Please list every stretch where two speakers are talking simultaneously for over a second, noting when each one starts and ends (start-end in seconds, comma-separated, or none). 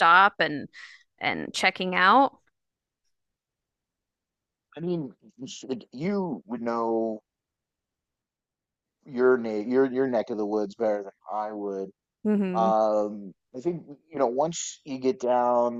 none